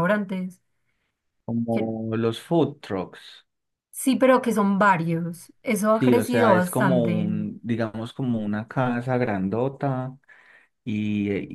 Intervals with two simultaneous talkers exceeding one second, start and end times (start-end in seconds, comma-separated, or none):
5.9-7.3